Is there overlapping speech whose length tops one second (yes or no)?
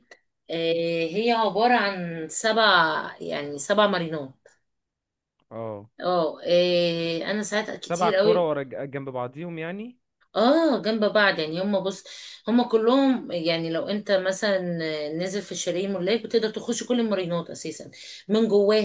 no